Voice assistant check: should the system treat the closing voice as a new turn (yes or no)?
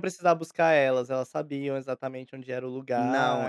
yes